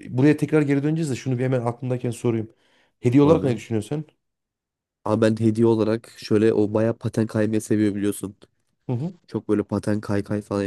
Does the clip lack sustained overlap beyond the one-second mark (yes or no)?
yes